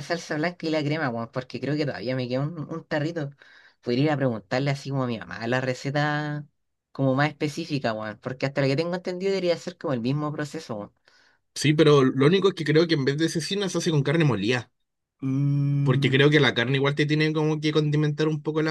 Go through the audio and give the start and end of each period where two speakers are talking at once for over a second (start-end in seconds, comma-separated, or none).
none